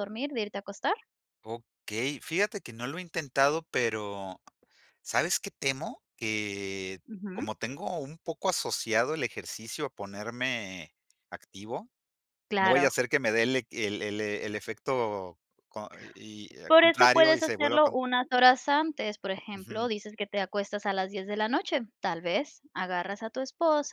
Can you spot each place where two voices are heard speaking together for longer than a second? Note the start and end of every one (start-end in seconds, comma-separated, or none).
16.7-18.0